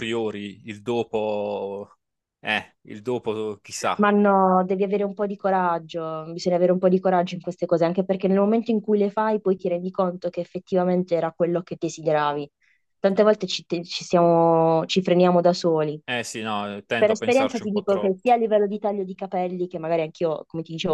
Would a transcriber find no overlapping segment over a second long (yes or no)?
no